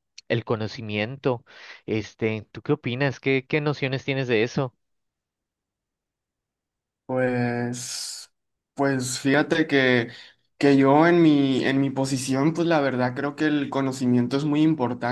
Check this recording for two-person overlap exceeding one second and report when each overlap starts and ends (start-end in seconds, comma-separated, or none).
none